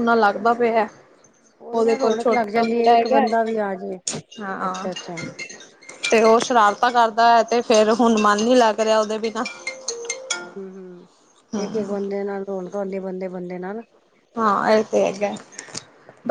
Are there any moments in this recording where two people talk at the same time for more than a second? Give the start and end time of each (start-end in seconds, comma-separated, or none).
1.8-3.2